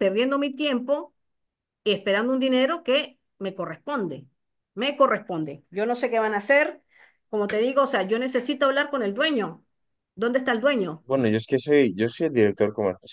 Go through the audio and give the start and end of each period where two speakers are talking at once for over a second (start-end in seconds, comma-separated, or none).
none